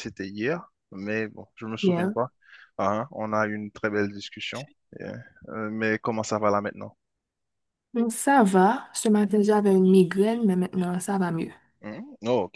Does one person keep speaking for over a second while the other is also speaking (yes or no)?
no